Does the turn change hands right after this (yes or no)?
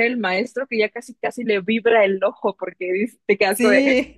no